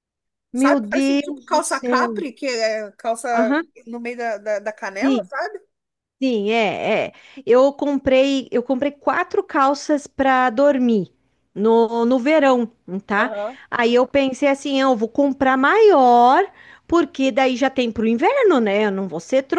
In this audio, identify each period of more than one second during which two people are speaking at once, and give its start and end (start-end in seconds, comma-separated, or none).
0.5-2.2